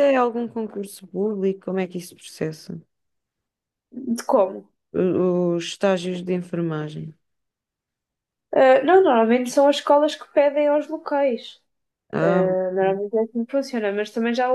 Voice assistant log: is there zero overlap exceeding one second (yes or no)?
yes